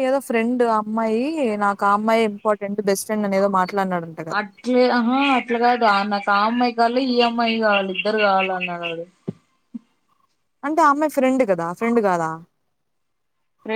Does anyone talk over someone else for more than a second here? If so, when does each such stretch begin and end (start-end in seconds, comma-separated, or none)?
none